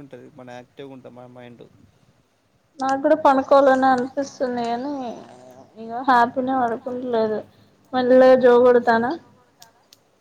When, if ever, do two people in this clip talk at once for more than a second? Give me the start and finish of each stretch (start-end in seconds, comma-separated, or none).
none